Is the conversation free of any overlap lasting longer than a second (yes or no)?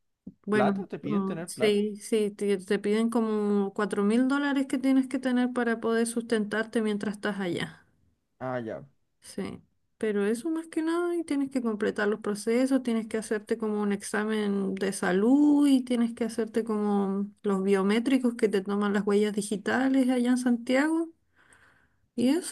no